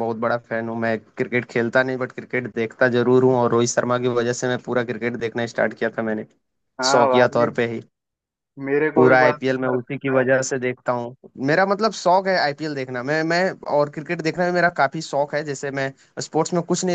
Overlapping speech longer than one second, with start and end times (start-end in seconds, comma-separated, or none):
8.9-10.2